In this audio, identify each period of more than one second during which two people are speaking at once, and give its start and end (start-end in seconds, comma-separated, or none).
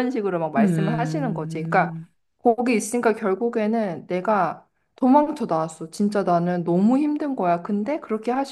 0.6-1.9